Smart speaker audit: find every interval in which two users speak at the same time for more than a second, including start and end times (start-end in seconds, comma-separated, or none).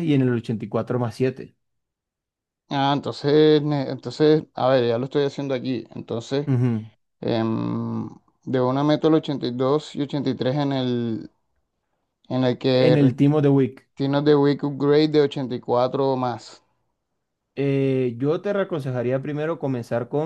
none